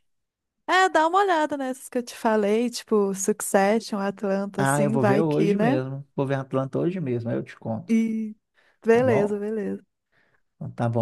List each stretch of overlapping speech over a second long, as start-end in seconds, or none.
4.6-5.8